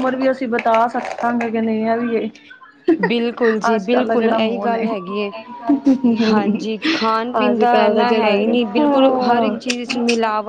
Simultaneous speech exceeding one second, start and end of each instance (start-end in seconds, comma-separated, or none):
7.5-9.5